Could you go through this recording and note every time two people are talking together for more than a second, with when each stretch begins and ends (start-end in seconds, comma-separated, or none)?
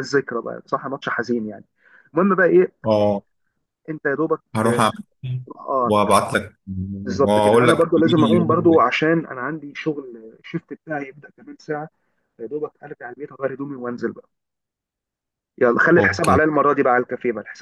7.1-8.8